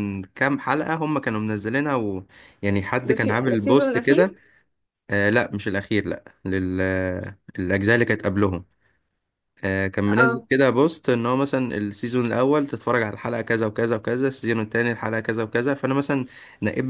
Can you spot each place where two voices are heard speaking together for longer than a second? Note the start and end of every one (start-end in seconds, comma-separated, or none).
3.0-4.3